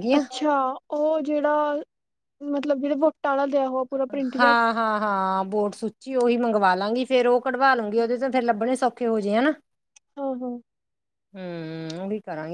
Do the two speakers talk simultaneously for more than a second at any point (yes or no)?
no